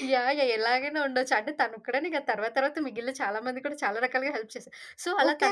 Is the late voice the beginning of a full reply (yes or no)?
no